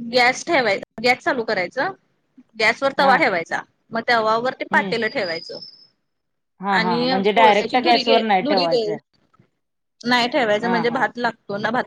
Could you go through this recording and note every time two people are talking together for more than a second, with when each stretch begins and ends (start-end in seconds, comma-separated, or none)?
6.8-8.8